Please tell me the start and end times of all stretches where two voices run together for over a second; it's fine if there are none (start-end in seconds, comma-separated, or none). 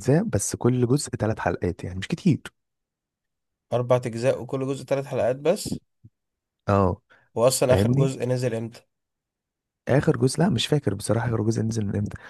none